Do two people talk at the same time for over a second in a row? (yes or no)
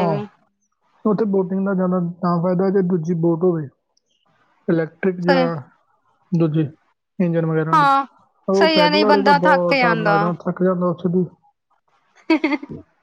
yes